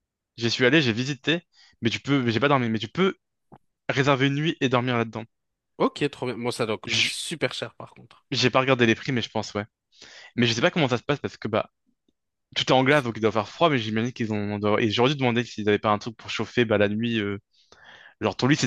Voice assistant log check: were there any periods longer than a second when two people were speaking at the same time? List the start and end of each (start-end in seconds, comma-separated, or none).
none